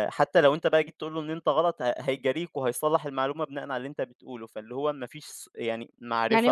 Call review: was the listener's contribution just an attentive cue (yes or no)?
no